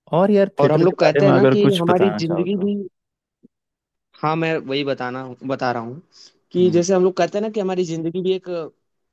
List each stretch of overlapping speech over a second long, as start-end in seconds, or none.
0.6-2.7